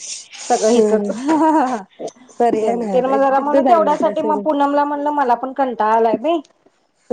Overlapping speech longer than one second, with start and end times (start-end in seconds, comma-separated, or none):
2.6-4.7